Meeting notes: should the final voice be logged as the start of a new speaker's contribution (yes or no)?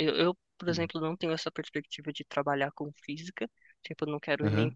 no